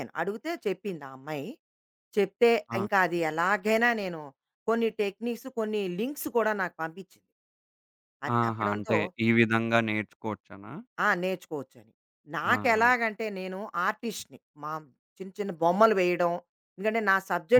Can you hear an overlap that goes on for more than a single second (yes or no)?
no